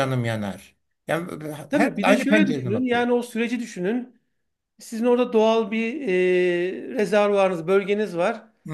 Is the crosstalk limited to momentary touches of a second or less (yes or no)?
no